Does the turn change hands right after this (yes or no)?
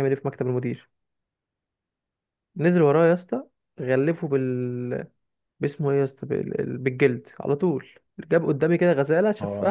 no